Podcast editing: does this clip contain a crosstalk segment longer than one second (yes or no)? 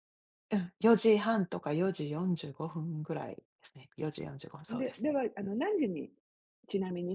no